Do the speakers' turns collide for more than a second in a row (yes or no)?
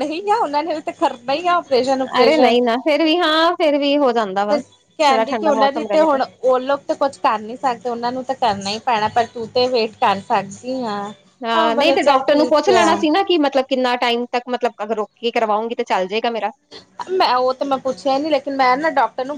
yes